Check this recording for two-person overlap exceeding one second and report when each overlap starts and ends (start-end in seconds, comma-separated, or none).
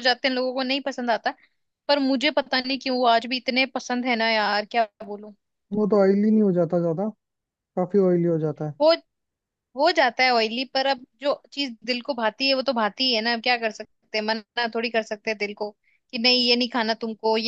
none